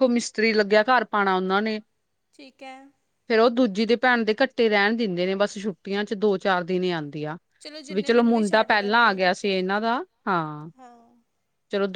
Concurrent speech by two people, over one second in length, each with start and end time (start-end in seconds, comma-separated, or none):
7.9-9.2